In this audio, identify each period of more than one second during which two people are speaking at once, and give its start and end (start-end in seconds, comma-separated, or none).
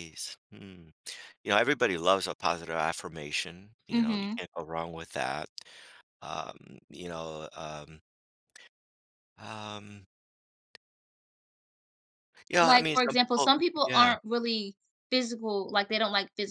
12.6-14.1